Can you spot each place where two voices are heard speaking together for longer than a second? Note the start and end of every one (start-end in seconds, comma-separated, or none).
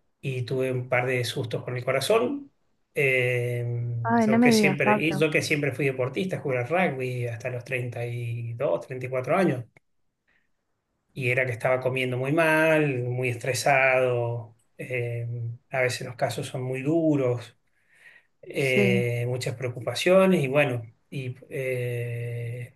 4.0-5.3